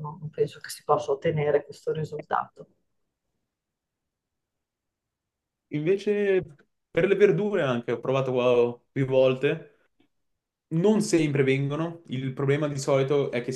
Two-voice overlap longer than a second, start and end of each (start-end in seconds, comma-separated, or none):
none